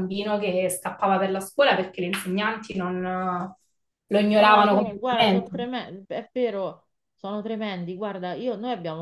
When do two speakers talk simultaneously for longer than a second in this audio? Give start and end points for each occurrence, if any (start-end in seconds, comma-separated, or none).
4.3-5.5